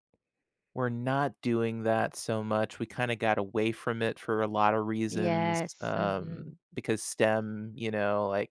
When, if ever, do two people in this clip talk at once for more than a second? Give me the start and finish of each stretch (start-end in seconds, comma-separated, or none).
5.1-6.6